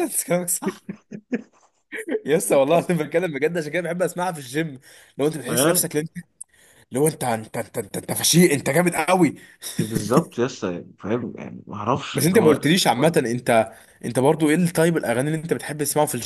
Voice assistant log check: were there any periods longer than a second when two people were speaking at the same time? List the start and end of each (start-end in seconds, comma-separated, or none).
none